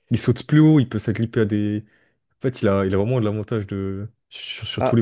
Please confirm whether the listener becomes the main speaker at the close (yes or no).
no